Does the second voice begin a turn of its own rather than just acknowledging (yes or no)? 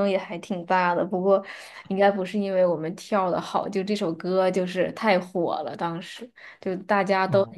no